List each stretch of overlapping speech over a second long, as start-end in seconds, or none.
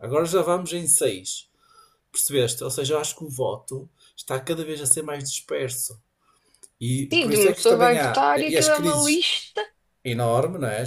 7.1-9.2